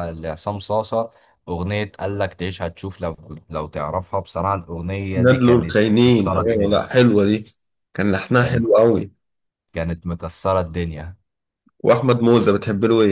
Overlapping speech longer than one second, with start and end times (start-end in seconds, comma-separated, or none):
5.2-6.8